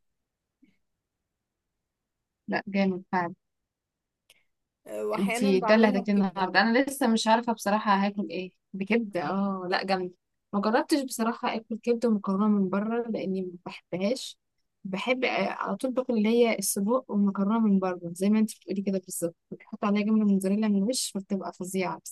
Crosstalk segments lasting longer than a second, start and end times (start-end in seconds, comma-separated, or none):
5.2-6.5